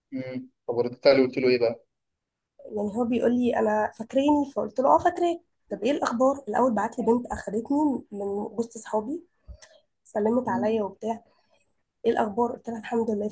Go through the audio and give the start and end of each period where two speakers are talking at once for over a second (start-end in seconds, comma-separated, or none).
none